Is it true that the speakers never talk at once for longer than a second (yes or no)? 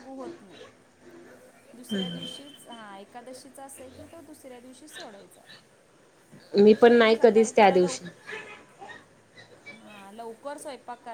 no